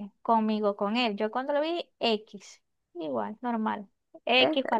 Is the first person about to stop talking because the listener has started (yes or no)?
no